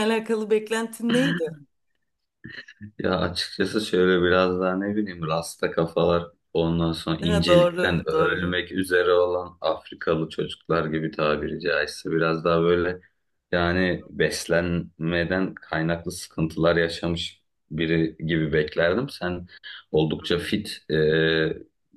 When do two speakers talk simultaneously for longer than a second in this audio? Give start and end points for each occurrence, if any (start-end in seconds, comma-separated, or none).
7.2-8.6